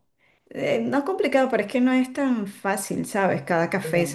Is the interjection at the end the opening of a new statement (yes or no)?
no